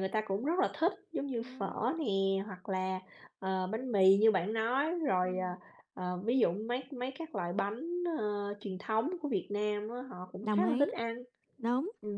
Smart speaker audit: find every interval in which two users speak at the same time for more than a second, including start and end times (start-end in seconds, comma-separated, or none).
none